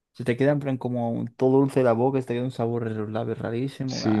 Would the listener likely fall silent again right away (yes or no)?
no